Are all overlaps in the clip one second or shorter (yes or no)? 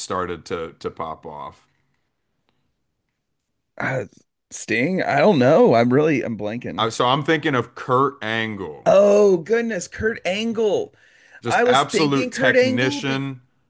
no